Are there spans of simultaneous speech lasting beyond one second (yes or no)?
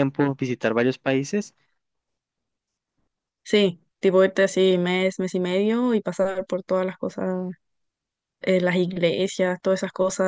no